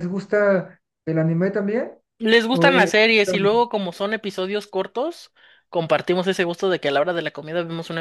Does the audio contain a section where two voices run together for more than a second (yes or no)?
no